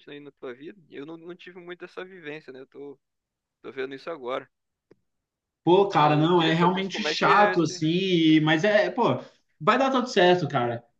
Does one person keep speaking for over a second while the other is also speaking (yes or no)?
yes